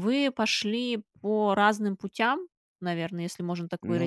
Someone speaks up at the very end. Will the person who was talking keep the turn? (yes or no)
yes